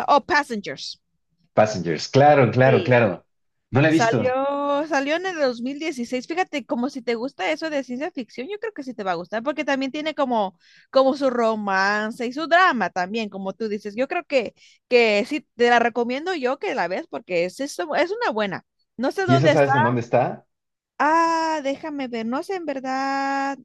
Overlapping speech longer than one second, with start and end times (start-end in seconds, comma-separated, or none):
none